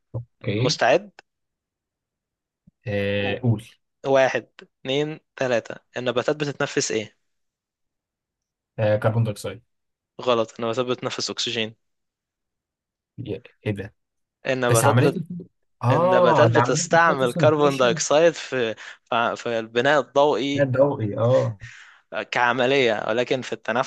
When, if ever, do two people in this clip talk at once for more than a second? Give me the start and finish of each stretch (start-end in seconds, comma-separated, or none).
15.9-18.0